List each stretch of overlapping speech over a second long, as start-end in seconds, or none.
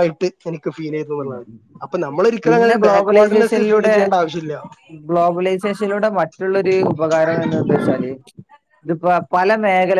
2.4-3.9